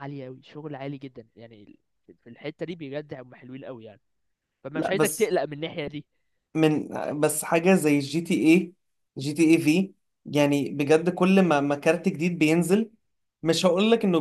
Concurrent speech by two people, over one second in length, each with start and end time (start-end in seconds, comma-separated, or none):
none